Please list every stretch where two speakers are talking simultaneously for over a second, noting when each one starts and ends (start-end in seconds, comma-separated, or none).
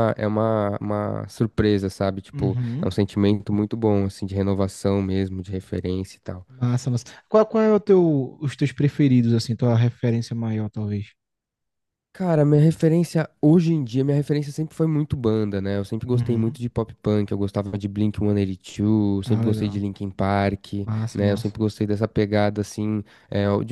none